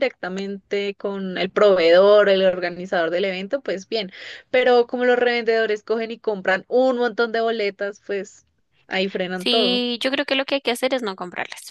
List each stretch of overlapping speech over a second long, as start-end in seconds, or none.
none